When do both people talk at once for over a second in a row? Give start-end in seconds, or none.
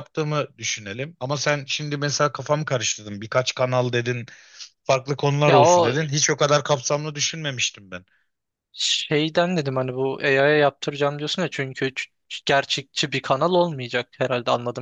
none